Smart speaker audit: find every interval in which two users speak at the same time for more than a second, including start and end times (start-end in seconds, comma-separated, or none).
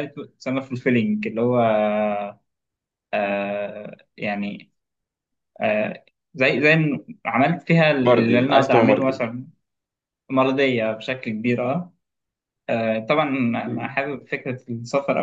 8.0-9.2